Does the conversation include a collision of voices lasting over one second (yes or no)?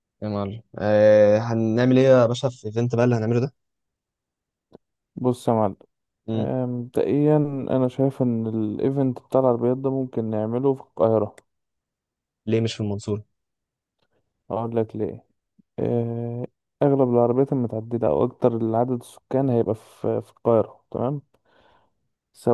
no